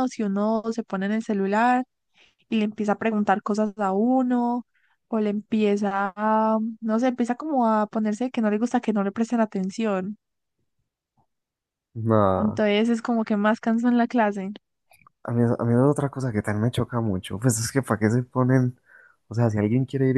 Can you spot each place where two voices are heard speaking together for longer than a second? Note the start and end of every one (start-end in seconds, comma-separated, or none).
none